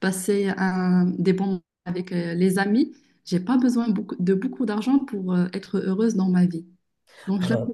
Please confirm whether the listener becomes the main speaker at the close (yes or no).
no